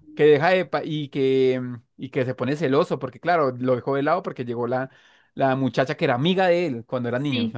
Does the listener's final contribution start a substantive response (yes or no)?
yes